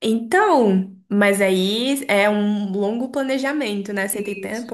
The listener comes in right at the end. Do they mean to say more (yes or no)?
yes